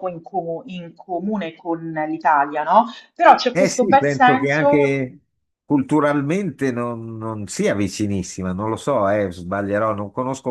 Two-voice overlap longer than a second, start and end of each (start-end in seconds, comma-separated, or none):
3.5-5.0